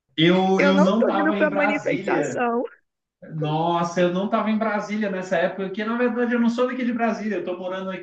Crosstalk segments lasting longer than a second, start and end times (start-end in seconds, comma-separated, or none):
0.6-2.5